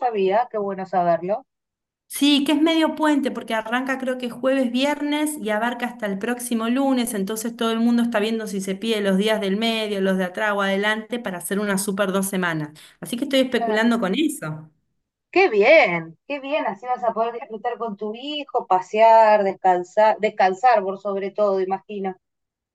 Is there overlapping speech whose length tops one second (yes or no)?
no